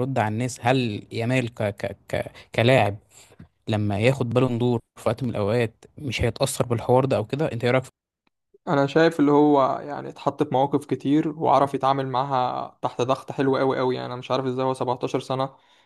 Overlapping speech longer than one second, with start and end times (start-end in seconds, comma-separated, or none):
none